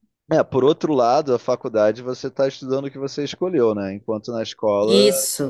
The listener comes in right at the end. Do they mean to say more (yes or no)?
no